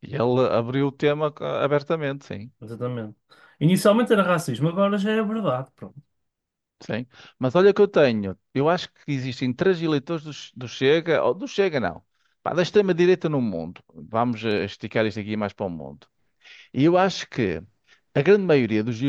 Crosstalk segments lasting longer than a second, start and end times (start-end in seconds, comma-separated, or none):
none